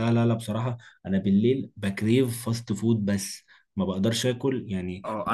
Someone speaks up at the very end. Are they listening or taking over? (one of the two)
taking over